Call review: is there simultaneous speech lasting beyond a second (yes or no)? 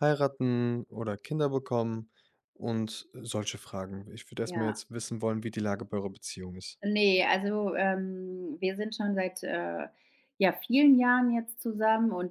no